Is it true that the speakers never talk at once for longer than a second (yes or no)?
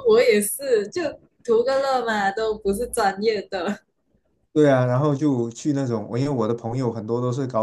yes